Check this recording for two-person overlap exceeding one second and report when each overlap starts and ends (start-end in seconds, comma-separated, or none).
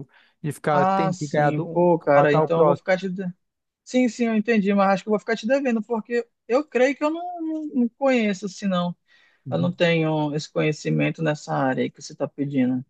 0.7-2.9